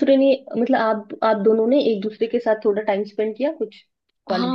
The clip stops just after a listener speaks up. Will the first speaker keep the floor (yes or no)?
no